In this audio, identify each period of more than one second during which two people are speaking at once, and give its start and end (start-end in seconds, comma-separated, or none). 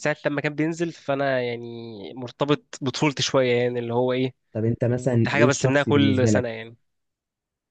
5.1-6.5